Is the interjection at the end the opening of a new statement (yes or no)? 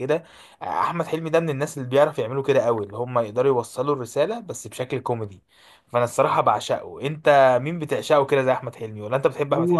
yes